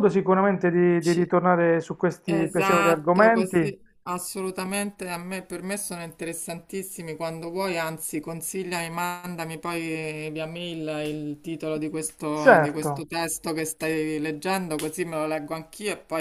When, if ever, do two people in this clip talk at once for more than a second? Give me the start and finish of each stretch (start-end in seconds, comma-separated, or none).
2.3-3.7